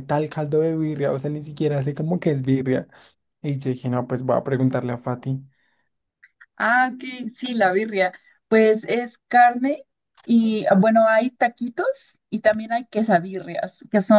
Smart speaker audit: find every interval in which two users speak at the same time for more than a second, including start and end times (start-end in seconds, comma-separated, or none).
none